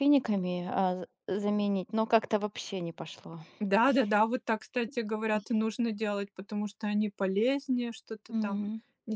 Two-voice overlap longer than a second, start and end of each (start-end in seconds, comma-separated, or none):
none